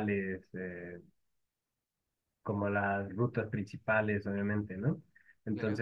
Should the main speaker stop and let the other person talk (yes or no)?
no